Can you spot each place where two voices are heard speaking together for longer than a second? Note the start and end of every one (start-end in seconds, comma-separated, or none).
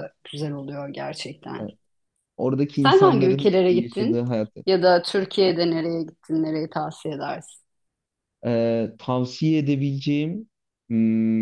2.8-4.2